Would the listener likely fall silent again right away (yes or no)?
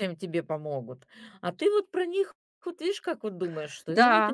no